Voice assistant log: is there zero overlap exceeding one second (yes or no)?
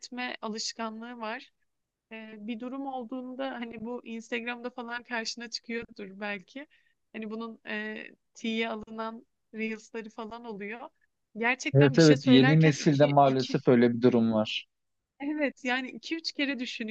no